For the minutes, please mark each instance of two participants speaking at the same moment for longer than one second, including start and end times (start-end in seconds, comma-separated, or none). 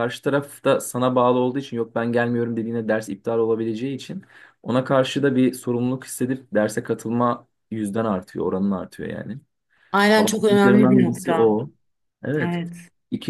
10.1-11.5